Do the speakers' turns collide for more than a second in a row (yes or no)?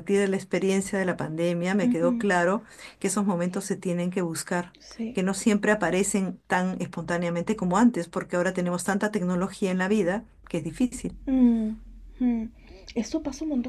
no